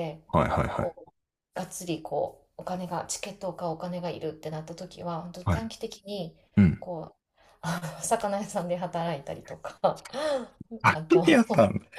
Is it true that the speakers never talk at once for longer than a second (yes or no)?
yes